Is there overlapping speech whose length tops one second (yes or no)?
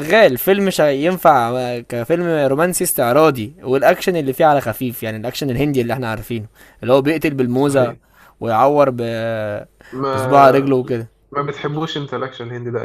no